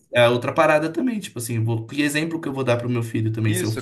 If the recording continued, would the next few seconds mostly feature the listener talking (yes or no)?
yes